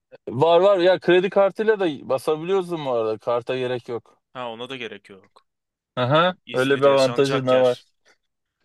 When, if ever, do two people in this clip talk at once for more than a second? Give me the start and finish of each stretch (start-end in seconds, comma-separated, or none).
6.2-7.8